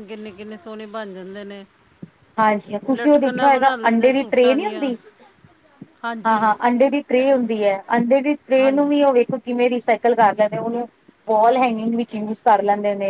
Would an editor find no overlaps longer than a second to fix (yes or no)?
no